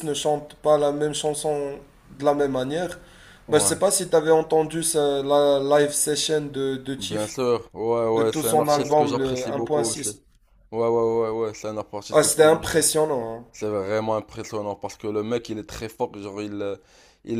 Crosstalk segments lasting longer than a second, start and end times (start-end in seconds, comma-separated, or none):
8.2-10.2